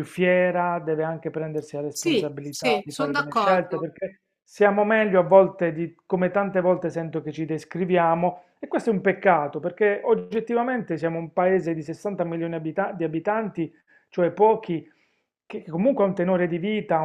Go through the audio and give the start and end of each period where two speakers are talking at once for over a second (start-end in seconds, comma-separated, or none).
1.9-3.9